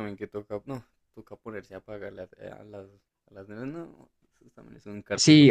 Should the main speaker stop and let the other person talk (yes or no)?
yes